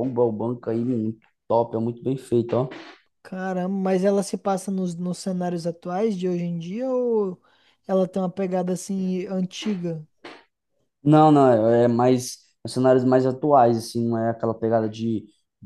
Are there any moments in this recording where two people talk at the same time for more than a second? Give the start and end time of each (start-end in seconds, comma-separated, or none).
none